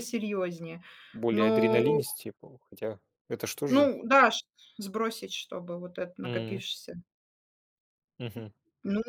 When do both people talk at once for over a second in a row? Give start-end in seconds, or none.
none